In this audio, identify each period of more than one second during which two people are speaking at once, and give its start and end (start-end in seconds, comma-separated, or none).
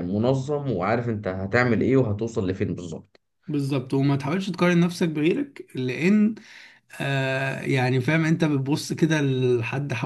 none